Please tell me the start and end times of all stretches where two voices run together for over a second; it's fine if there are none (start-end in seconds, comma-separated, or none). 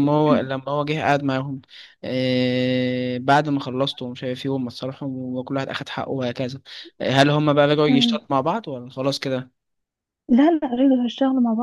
none